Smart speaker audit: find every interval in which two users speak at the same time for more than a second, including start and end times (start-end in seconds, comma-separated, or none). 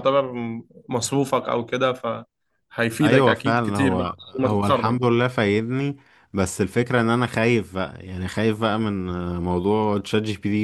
3.0-5.0